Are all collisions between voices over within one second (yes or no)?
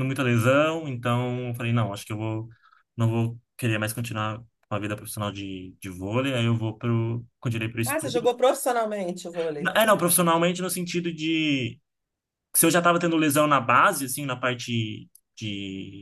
yes